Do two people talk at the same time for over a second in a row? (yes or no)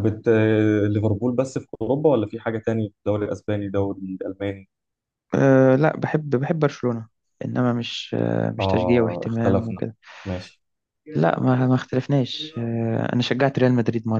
yes